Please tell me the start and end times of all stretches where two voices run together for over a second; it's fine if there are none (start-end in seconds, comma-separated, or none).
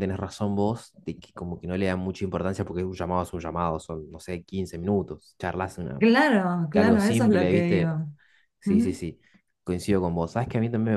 6.7-8.0